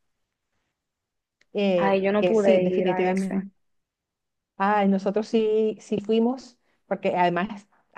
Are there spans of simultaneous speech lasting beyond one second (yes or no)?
yes